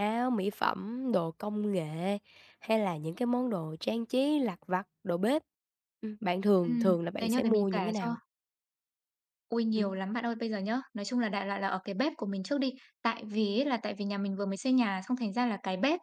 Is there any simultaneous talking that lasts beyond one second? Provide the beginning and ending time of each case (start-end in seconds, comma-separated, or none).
6.6-8.1